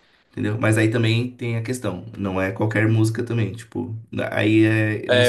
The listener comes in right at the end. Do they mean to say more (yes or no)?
yes